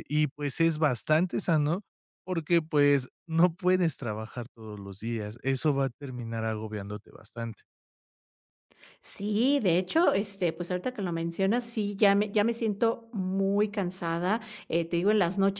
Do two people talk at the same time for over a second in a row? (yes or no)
no